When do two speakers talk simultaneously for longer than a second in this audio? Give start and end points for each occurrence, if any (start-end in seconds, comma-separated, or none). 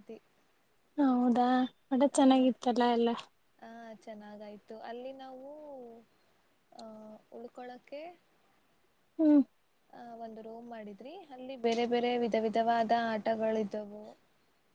none